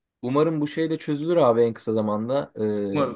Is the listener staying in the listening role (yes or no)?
yes